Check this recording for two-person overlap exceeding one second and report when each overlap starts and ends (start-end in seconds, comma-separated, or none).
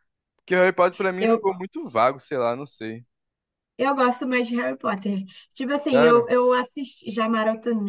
none